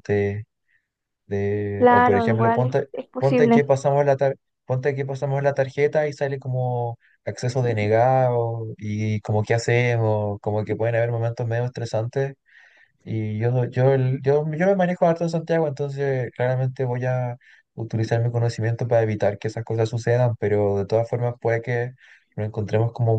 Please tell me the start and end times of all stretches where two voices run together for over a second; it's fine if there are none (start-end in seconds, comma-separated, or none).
1.8-3.6